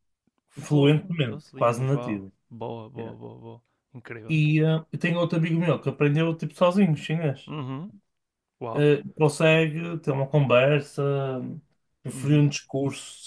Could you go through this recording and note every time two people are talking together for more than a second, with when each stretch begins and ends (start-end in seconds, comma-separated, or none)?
0.6-2.3